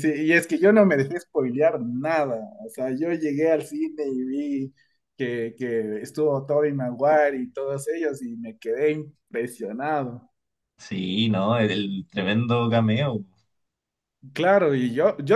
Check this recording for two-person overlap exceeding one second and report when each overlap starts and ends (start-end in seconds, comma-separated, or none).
none